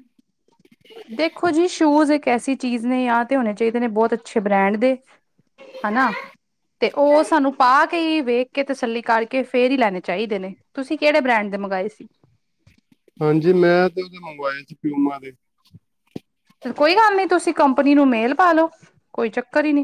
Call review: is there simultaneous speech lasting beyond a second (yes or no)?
no